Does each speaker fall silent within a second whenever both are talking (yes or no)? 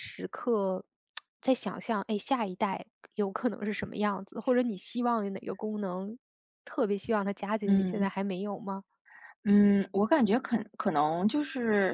yes